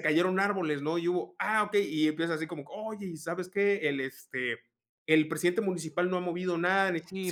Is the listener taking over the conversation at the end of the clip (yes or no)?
yes